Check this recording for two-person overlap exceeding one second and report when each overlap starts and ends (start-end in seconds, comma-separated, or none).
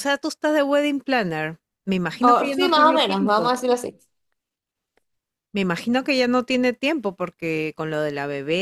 2.2-3.5